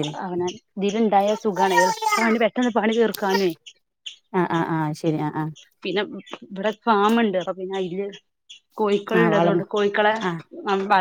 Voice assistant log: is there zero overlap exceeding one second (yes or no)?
yes